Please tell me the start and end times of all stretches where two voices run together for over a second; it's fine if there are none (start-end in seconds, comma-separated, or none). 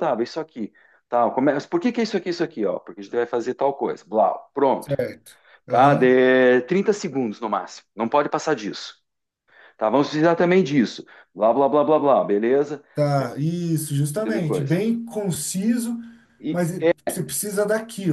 none